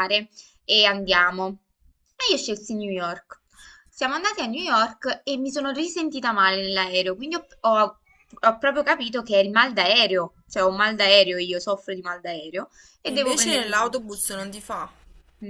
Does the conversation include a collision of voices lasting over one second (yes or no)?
yes